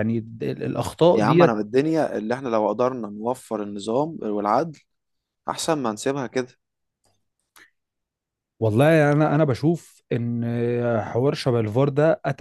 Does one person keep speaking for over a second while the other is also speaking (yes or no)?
no